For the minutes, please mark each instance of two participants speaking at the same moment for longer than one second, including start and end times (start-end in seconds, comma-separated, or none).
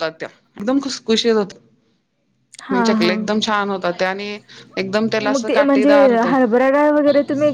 none